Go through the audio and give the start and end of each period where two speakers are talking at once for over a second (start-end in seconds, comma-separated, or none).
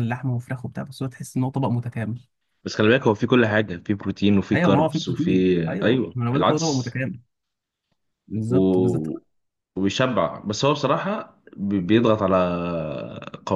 4.5-7.0